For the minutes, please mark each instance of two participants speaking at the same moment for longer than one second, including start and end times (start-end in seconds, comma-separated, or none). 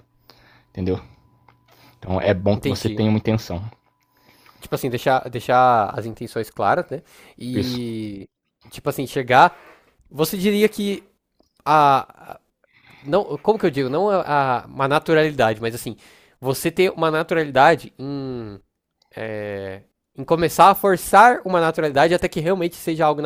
none